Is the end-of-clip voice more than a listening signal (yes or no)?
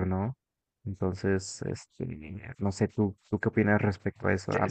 yes